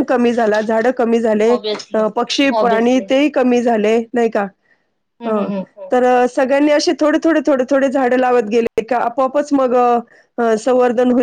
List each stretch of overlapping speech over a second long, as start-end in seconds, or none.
none